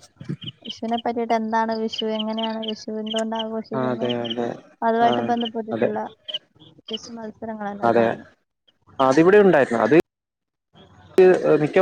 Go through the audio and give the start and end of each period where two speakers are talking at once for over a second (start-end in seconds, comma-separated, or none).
none